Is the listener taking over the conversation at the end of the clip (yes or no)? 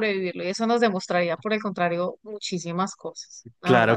yes